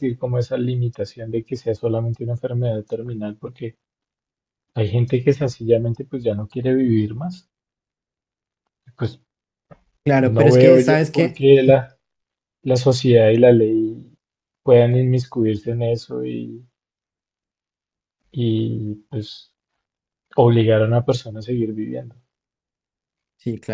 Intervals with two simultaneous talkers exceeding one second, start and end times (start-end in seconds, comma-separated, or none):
10.2-11.4